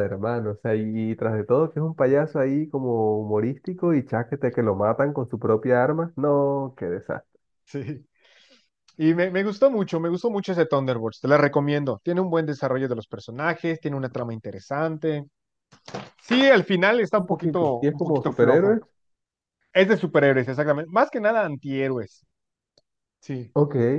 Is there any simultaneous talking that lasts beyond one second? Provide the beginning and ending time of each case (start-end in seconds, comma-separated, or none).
17.1-18.8